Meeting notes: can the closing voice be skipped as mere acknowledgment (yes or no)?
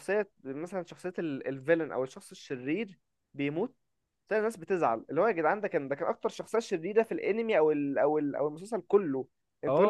no